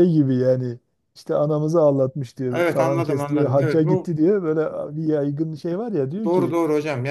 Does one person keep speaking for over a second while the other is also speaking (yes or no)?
yes